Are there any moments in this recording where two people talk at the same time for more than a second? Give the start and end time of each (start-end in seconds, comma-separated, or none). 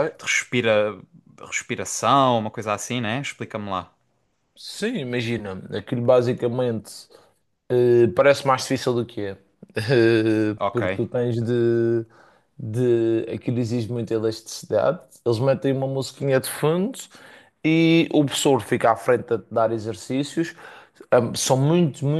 none